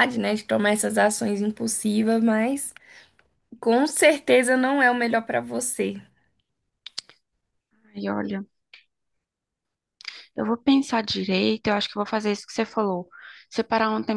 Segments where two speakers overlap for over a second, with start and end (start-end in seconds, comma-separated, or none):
none